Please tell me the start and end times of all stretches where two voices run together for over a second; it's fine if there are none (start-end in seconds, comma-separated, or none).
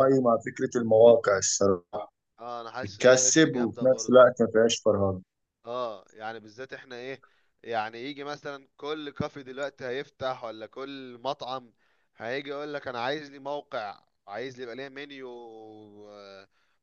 2.8-4.3